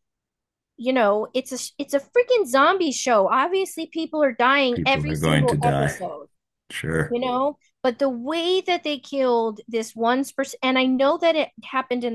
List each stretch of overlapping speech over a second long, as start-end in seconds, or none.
4.7-6.0